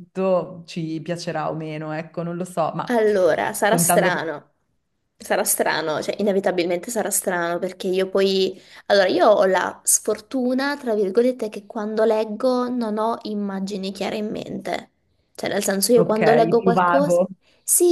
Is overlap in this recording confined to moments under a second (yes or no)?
no